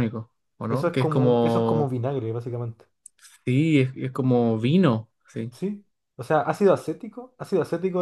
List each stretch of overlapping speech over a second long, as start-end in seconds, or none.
0.7-1.9